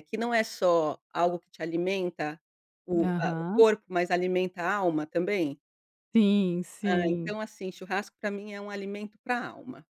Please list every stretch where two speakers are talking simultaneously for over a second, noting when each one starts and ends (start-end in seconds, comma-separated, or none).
none